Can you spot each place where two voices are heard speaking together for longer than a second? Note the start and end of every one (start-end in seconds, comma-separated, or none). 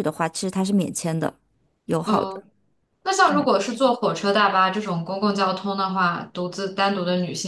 none